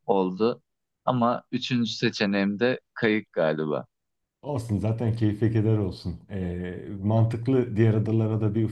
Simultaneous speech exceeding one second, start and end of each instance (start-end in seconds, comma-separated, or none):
none